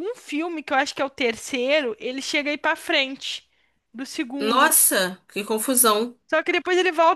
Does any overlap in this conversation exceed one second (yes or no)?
no